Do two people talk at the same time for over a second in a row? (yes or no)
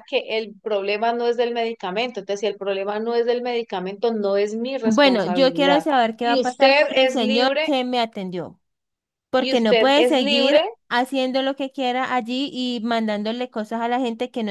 yes